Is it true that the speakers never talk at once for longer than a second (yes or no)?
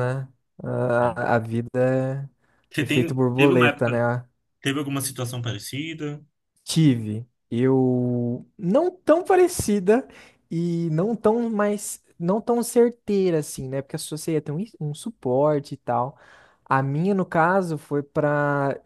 no